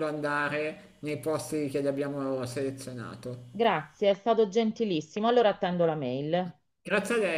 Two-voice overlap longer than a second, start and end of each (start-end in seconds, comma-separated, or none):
none